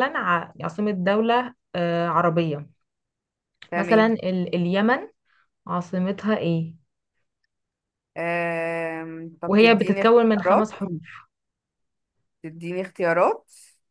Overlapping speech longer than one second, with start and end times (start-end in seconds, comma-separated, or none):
9.5-10.7